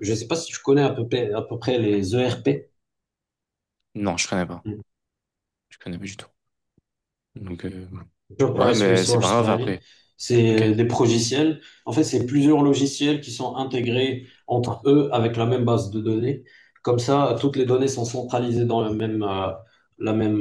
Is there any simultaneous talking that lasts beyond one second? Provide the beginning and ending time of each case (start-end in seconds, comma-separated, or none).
8.5-9.7